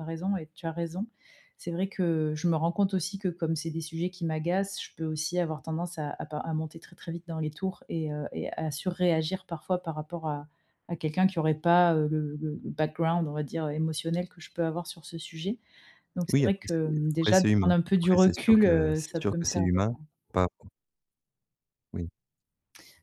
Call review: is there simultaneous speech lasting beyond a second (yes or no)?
yes